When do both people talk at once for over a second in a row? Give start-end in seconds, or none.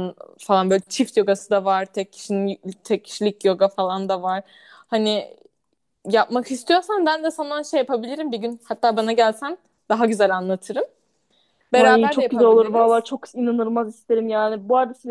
11.8-13.1